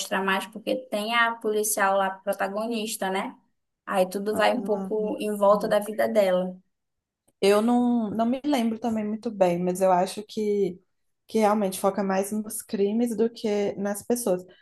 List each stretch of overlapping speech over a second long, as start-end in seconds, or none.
4.6-5.9